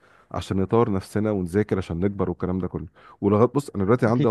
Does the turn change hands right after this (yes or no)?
no